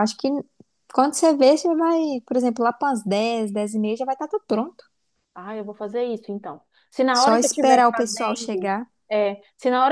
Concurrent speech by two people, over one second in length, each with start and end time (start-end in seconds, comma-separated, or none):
7.1-8.9